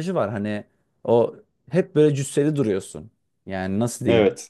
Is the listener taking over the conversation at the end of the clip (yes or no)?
no